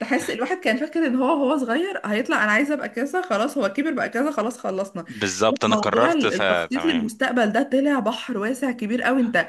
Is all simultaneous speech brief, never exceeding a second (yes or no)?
no